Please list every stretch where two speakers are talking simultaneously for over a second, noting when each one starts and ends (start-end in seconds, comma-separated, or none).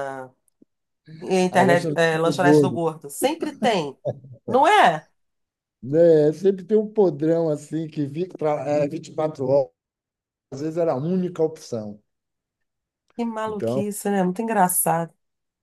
1.5-2.8